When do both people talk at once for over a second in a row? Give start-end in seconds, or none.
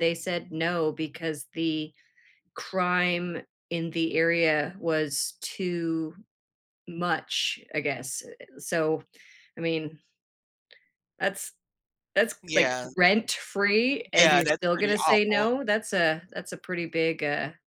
14.2-15.5